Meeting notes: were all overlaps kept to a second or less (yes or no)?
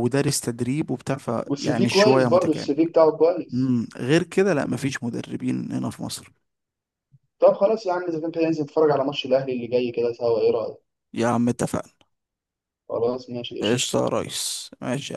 no